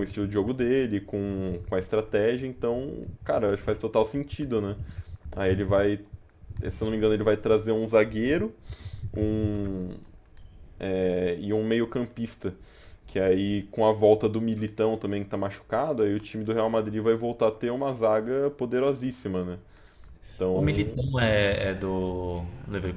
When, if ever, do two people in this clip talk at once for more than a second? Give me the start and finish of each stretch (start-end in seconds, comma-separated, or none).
none